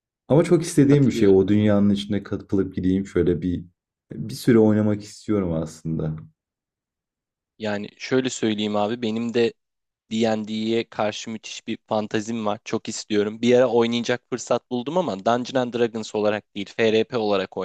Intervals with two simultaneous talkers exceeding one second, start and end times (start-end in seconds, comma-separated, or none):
none